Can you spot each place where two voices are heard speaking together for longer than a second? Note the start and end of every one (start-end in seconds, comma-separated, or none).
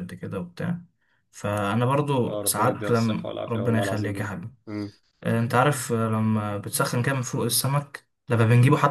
2.3-4.3